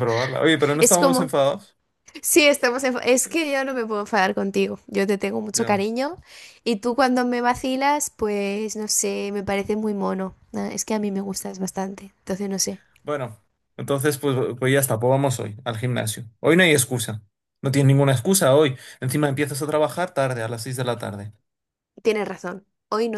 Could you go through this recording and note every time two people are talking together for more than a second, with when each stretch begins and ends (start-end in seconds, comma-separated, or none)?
none